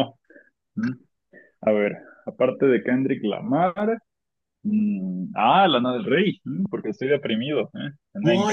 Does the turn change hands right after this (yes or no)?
yes